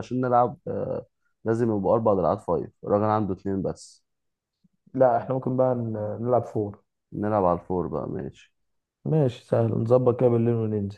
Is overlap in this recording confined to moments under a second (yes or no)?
yes